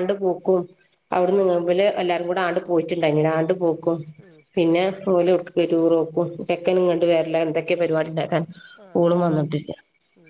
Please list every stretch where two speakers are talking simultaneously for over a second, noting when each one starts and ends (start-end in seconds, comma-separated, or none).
1.3-3.4